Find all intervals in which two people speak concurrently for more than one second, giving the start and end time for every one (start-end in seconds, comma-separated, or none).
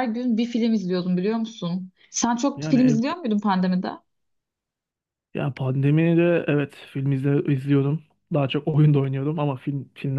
none